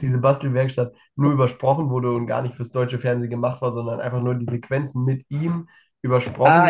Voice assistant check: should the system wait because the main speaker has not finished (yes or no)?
no